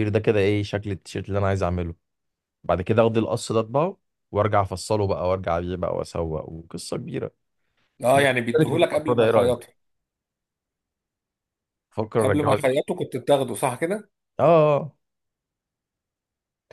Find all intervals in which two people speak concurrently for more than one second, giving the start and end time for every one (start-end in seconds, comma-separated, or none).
8.1-9.5